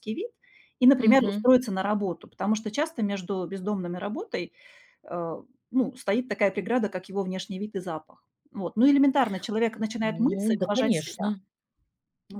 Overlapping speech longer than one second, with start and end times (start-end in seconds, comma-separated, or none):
10.0-11.4